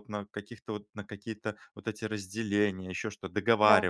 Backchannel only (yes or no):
yes